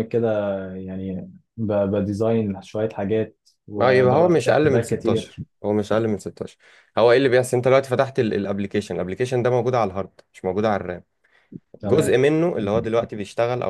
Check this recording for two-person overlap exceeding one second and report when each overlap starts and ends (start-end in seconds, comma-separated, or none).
3.8-5.3